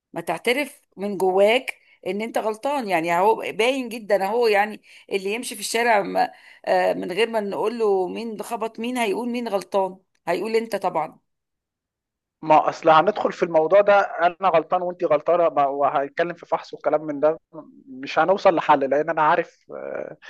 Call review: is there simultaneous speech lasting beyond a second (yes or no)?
no